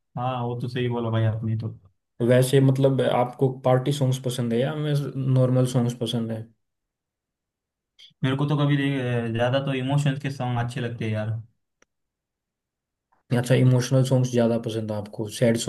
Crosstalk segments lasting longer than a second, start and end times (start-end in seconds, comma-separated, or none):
none